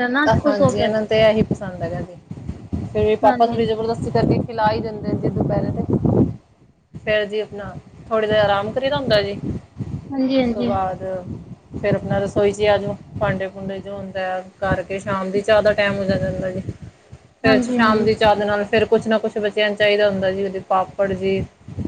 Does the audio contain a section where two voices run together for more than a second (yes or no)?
no